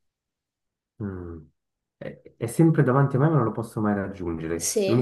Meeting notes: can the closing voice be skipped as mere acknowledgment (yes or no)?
yes